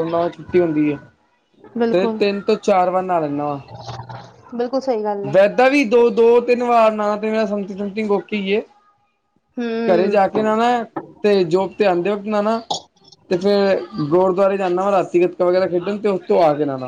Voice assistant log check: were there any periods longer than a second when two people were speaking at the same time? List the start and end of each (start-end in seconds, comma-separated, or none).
none